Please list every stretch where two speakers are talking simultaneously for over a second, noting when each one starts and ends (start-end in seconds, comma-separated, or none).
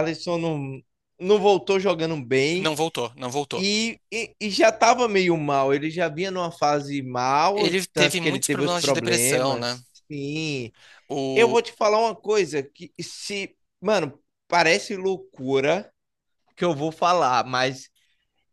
7.5-9.8